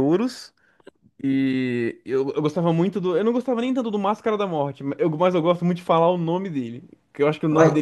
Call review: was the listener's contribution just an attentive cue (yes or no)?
yes